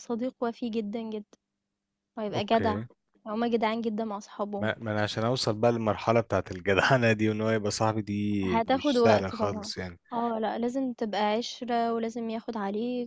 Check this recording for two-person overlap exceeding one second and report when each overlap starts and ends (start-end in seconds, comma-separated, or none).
8.4-9.7